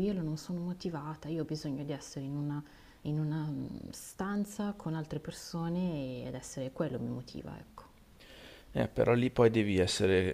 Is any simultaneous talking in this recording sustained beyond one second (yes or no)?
no